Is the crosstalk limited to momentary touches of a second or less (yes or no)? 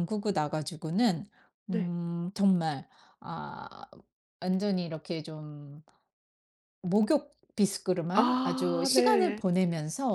no